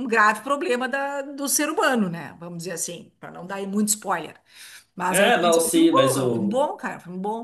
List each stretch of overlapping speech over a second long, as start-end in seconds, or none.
5.1-6.6